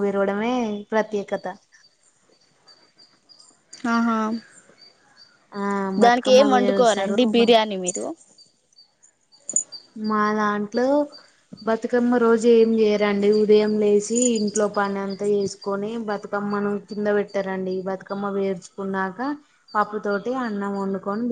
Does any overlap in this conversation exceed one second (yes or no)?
yes